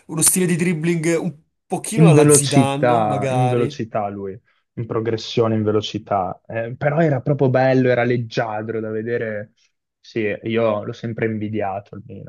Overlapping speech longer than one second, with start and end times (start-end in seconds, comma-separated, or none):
1.9-3.8